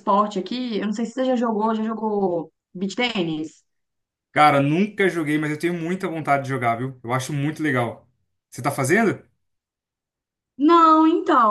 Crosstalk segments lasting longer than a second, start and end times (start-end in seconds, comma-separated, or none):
none